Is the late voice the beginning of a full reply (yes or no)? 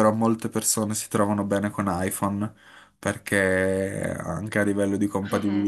no